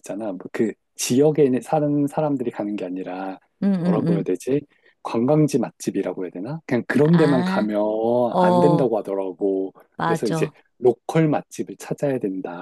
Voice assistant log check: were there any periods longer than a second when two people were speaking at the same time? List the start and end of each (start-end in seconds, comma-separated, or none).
none